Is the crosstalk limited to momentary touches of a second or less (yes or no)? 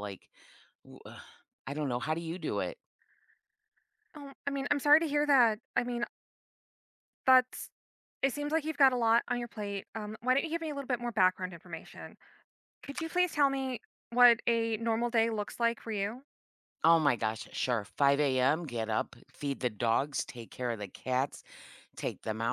yes